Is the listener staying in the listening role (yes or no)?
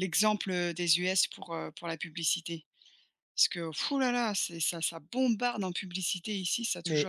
no